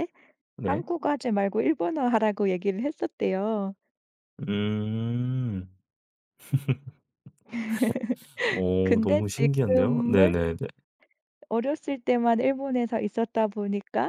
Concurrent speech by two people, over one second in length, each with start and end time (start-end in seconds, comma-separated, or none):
8.8-10.4